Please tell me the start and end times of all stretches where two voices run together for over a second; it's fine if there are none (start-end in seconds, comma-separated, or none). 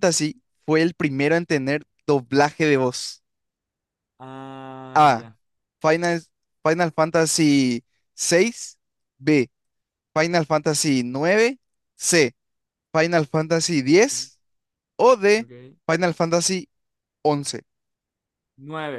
none